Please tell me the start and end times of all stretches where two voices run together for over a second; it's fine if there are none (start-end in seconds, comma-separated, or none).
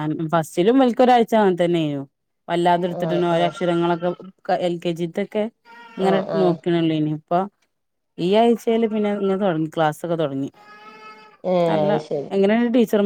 none